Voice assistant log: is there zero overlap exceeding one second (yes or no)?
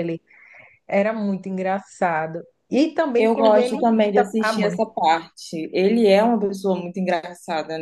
no